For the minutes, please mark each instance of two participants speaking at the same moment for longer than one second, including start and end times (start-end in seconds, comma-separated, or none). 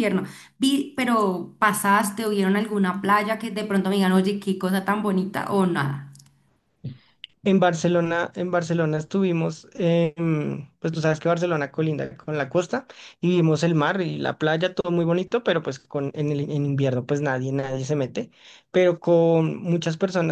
none